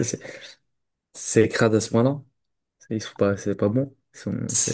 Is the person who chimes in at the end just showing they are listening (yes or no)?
no